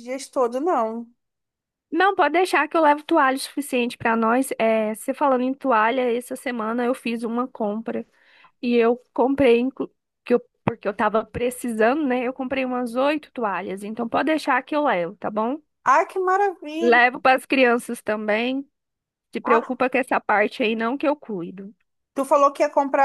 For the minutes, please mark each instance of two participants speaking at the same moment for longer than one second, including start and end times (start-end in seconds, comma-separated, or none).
none